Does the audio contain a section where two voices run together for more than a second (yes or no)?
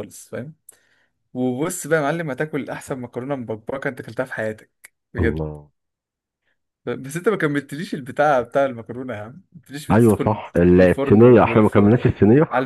yes